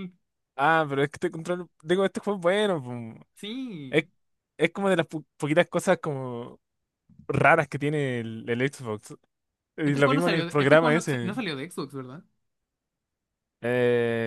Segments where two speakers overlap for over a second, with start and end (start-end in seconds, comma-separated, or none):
9.8-11.4